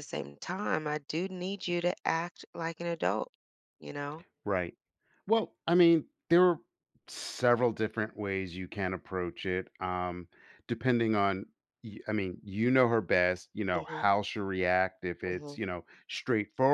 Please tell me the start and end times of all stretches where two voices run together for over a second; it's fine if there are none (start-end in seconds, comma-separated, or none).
none